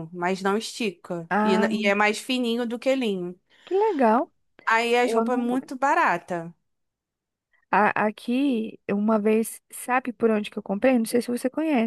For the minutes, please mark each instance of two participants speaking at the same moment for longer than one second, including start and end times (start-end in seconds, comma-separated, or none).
none